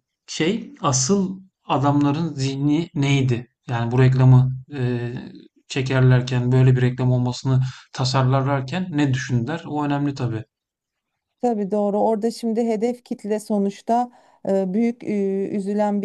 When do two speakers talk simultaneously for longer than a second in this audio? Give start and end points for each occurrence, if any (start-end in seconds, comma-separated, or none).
none